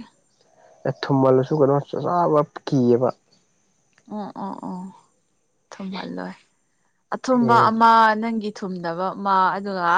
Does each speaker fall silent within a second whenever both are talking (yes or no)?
yes